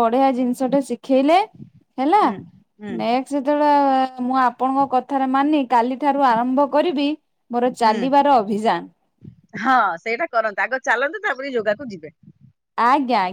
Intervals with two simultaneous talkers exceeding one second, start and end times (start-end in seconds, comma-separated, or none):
none